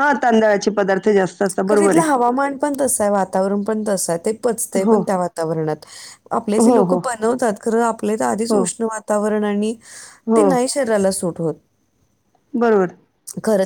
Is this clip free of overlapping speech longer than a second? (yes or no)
yes